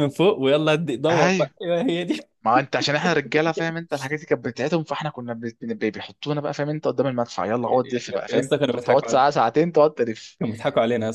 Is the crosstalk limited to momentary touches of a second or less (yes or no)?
no